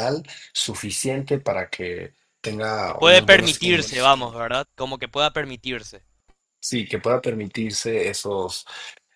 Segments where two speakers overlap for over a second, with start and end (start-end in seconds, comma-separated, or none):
2.8-4.1